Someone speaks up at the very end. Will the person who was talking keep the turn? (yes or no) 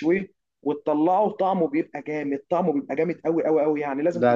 no